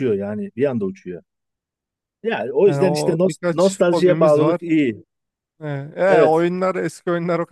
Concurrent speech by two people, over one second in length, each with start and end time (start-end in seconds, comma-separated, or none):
2.6-4.6